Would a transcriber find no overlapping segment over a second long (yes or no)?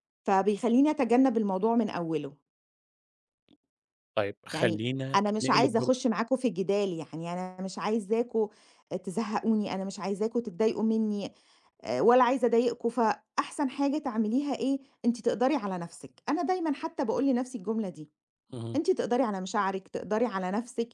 no